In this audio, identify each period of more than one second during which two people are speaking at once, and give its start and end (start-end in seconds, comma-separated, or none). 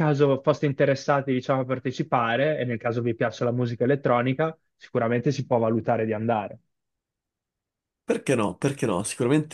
none